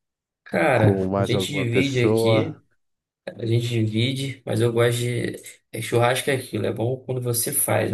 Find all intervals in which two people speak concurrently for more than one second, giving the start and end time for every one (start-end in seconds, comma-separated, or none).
0.7-2.6